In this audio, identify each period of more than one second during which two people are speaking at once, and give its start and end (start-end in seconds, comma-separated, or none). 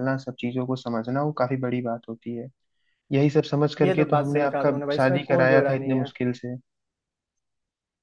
3.8-6.1